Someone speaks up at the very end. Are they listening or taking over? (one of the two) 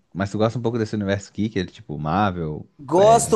taking over